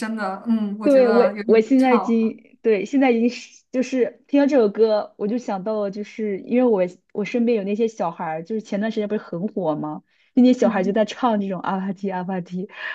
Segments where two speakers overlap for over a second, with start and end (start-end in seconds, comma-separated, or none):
0.8-2.4